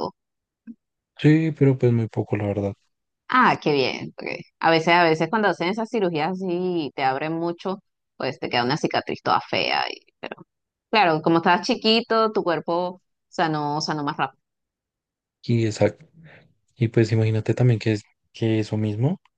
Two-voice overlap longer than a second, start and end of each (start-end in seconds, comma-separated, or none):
none